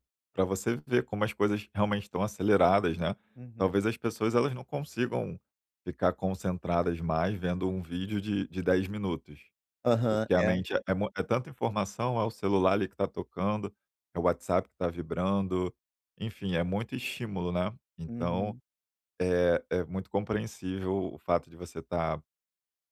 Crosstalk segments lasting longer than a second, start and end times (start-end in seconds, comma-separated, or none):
none